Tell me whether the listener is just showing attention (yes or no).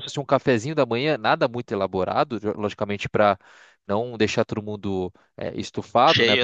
yes